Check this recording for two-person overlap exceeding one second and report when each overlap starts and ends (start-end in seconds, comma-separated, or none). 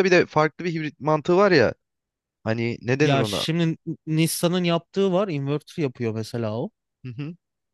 none